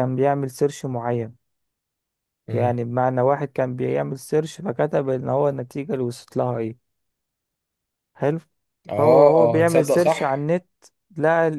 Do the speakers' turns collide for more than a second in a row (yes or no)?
yes